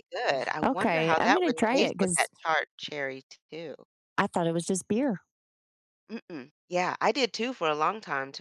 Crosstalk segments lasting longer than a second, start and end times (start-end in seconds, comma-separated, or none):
0.6-2.3